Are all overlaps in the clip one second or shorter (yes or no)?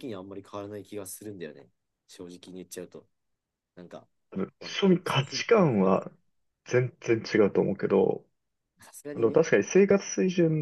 no